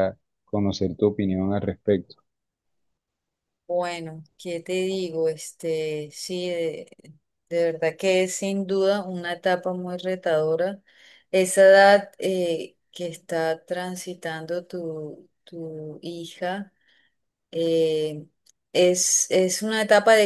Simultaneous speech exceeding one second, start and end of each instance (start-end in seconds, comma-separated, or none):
none